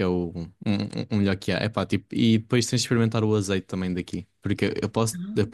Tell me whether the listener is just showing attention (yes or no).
yes